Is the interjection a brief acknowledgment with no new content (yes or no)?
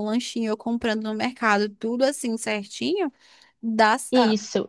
no